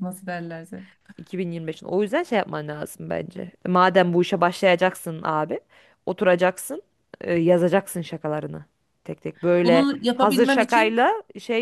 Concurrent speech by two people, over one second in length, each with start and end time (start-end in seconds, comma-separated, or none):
9.6-11.0